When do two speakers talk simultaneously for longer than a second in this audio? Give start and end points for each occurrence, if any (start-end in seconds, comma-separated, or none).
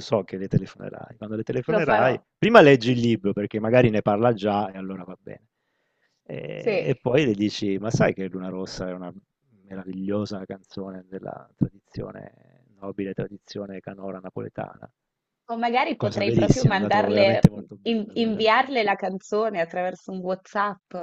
16.0-18.7